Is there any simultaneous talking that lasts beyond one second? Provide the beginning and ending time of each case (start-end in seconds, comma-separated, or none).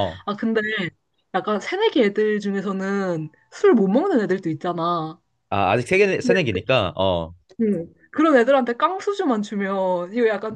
none